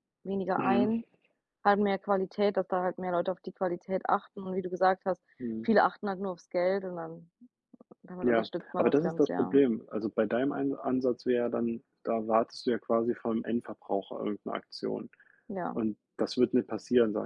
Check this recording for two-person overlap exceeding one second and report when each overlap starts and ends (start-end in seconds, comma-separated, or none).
8.2-9.6